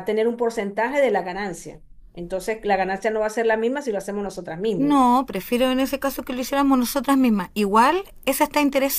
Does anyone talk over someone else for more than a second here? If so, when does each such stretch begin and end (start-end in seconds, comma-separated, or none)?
none